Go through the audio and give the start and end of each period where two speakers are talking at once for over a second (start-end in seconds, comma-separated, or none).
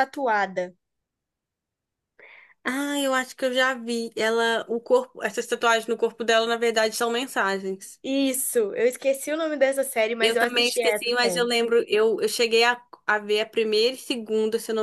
10.2-11.5